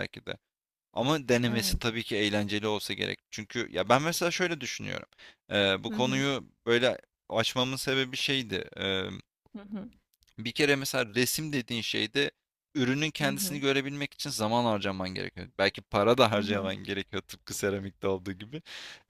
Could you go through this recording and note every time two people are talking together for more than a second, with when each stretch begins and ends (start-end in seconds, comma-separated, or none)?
none